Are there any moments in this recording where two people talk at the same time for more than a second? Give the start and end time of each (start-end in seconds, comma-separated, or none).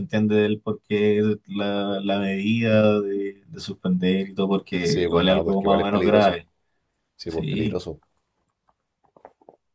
4.8-6.4